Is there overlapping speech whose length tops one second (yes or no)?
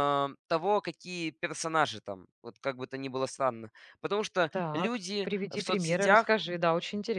yes